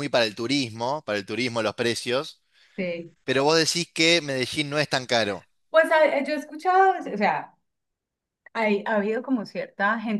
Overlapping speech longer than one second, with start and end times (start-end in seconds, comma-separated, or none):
none